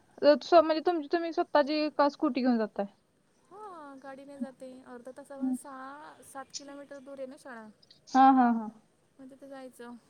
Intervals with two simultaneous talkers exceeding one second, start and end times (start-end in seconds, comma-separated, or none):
none